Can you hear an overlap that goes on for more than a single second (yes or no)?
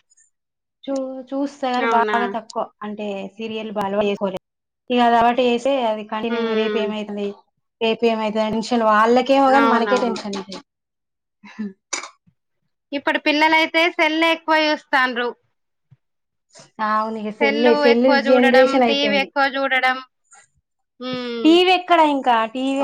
yes